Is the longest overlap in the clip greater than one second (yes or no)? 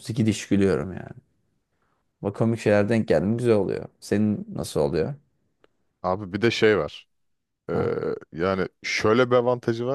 no